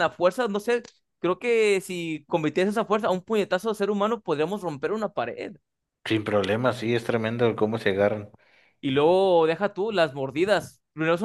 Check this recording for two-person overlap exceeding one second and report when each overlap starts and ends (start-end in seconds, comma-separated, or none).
none